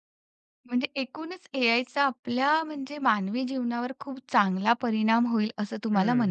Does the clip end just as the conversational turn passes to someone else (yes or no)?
yes